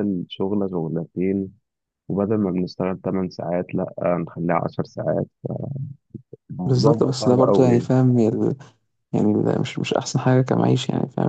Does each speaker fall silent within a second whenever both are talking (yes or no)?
no